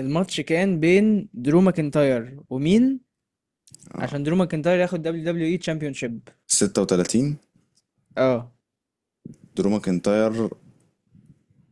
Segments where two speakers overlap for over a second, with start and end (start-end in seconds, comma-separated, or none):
none